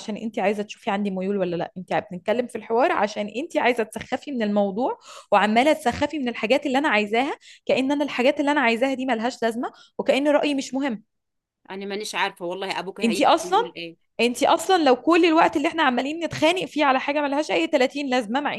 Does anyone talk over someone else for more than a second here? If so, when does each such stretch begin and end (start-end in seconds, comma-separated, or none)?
none